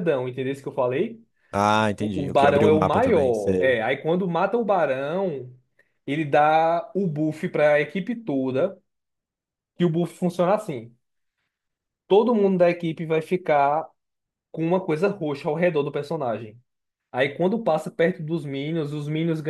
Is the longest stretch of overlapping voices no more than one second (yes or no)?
no